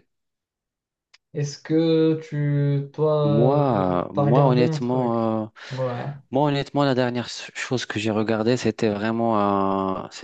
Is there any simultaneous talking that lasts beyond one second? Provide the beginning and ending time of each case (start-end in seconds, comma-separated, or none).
3.2-5.3